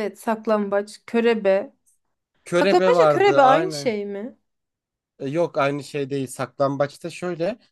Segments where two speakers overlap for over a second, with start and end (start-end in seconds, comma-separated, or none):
2.5-3.9